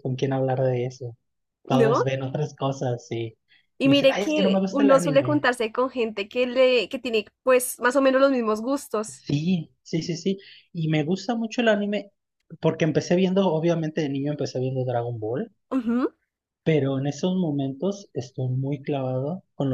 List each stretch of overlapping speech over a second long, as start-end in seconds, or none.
3.8-5.5